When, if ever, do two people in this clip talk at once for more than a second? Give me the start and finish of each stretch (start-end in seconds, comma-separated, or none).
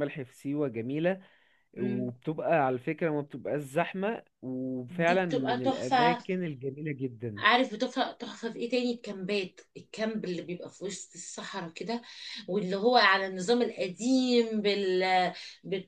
4.9-6.2